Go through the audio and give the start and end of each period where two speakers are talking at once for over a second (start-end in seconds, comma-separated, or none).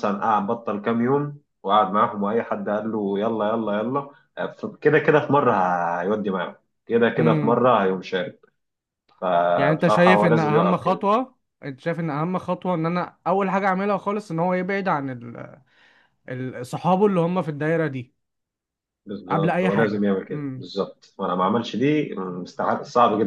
9.6-11.1, 19.3-20.7